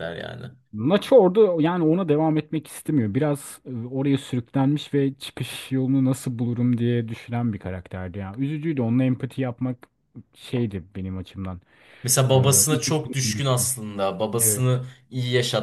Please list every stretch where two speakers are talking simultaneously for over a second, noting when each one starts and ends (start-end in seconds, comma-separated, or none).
12.3-13.7